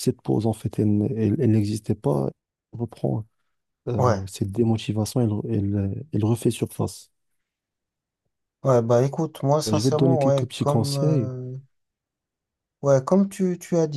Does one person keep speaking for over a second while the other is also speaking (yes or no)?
yes